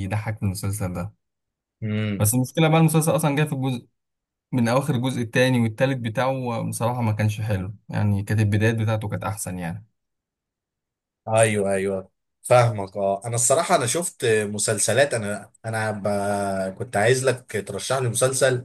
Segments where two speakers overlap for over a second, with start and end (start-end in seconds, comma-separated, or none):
none